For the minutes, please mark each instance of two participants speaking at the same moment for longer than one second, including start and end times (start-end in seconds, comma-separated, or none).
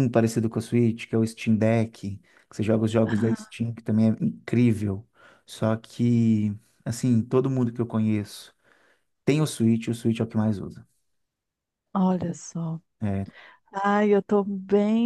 none